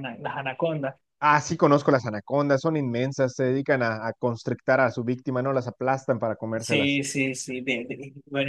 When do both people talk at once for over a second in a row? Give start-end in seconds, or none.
none